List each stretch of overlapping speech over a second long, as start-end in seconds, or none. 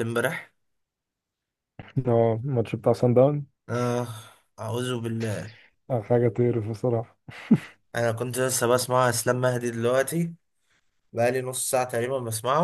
none